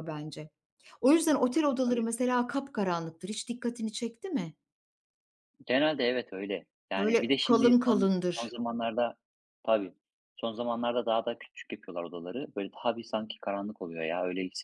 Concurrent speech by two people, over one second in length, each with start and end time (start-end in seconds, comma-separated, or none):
7.0-8.6